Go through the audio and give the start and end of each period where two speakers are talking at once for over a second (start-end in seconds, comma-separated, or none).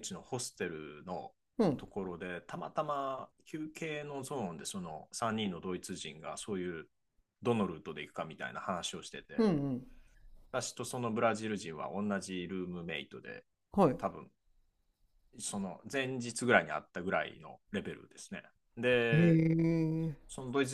none